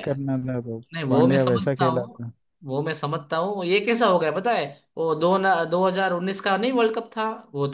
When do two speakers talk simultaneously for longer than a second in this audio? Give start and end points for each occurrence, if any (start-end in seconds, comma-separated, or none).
0.9-2.2